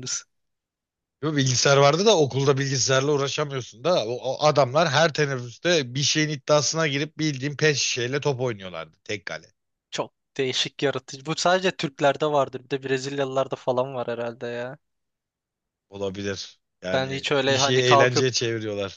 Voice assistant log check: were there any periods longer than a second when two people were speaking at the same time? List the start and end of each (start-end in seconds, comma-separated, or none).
16.9-18.3